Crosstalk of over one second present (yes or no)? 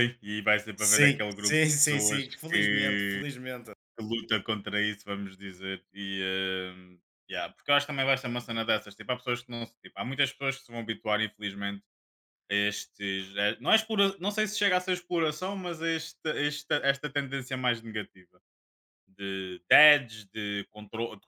yes